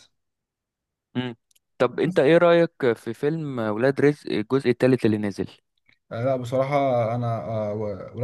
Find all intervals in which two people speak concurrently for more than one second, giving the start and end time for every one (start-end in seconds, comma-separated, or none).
none